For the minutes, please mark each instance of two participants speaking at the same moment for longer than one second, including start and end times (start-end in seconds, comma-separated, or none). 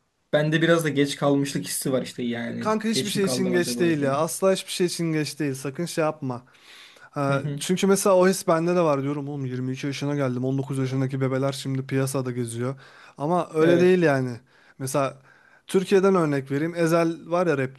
2.6-4.2